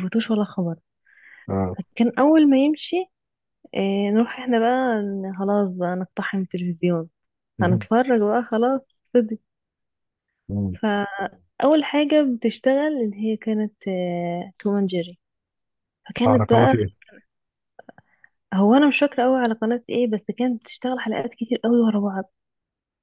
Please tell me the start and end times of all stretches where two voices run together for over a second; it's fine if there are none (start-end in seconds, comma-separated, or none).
none